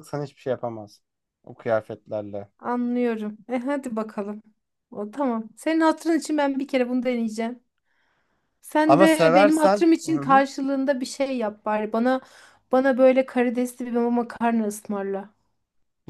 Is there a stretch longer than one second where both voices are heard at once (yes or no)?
yes